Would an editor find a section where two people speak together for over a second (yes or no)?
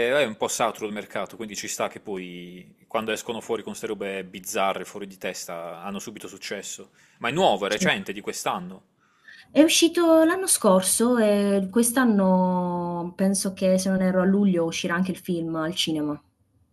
no